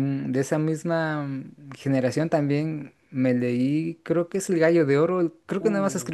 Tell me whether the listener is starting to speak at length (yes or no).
no